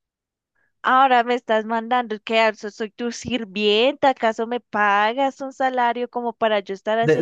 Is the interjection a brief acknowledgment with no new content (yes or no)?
no